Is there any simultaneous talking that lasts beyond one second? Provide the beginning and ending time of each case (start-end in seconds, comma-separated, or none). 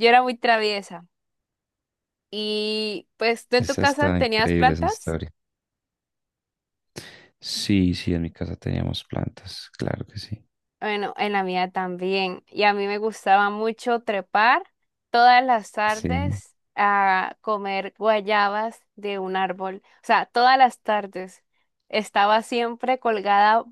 3.6-5.2